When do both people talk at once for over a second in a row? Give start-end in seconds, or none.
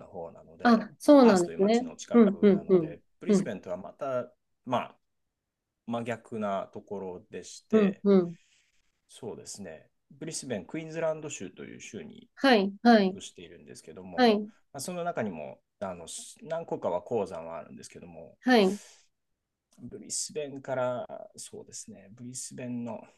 0.6-3.5